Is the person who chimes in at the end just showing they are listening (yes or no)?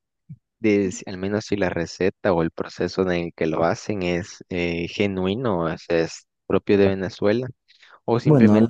yes